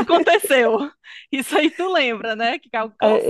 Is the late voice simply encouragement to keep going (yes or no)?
no